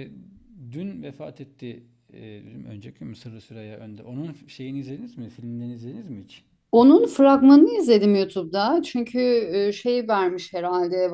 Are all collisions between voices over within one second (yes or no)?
yes